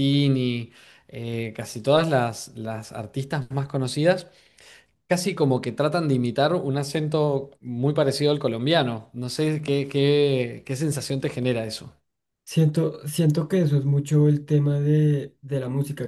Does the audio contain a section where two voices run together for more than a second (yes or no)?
no